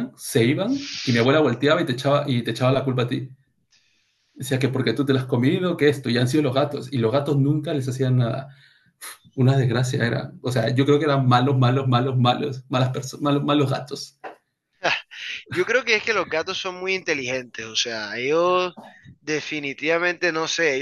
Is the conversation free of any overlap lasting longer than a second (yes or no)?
yes